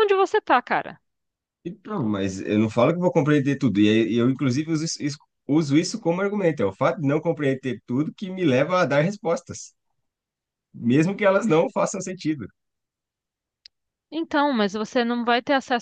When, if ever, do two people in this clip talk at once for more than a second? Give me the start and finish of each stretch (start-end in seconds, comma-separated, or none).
none